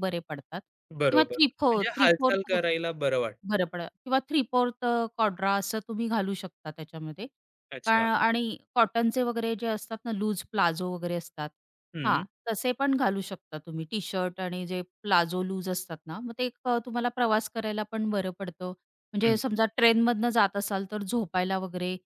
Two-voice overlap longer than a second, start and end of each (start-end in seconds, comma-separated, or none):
1.1-2.5